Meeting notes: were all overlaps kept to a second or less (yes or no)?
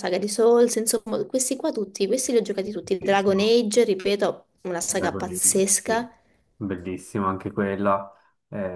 no